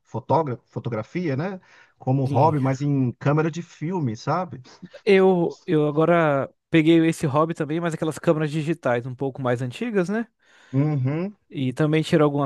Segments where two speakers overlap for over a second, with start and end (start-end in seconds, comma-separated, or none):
none